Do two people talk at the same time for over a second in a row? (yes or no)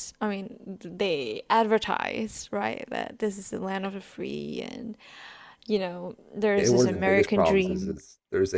yes